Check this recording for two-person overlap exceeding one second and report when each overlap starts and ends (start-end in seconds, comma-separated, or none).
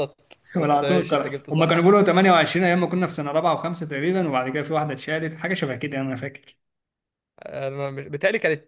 0.6-1.8